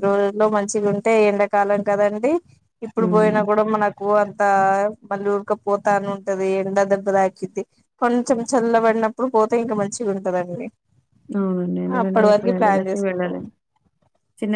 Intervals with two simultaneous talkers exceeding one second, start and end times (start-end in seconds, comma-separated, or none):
12.0-13.4